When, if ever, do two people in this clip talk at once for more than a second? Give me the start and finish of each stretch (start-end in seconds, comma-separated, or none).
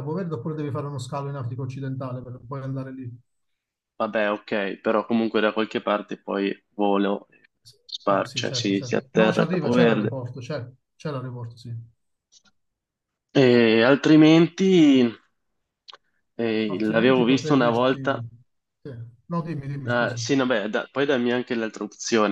8.1-10.1, 16.7-18.2